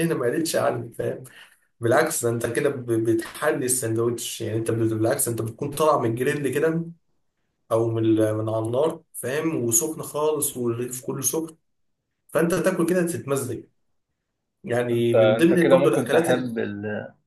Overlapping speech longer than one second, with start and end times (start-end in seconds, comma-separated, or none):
14.9-16.6